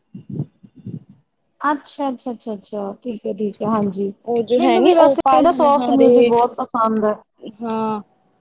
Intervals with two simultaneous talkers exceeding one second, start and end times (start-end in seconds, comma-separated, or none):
4.6-6.3